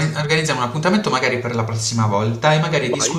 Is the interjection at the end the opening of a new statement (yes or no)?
no